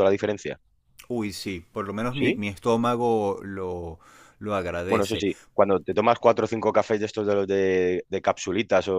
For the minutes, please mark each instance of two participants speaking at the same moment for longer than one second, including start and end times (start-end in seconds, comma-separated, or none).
none